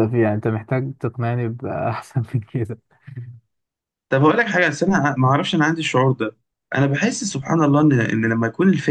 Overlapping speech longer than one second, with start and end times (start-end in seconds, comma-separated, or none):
none